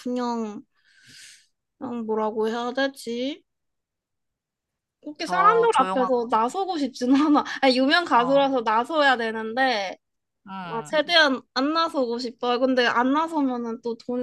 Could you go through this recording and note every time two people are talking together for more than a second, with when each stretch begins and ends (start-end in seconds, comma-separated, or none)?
5.2-6.6